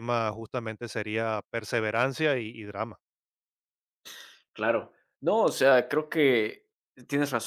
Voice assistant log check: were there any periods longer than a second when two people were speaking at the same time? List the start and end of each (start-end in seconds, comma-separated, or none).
none